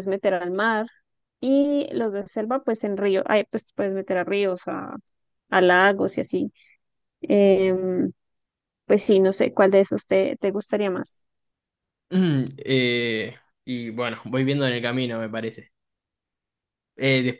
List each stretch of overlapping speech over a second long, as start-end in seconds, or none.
none